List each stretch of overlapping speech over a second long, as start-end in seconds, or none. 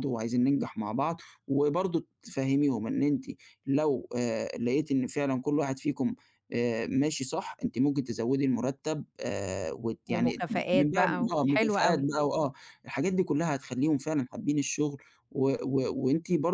10.1-12.1